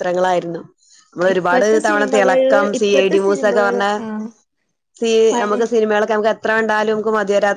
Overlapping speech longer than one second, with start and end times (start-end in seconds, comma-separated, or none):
1.3-3.9